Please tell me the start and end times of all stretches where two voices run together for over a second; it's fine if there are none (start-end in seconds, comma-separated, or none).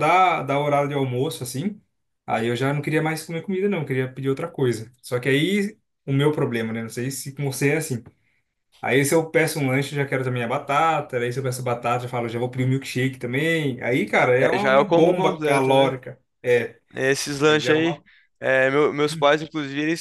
14.4-15.9